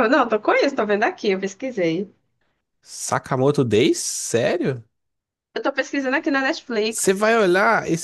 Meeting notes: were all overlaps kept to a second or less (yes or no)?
yes